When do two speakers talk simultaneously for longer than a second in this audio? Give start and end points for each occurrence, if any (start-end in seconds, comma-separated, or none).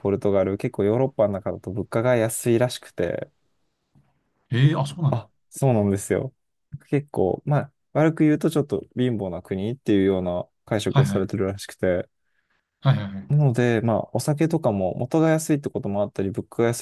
none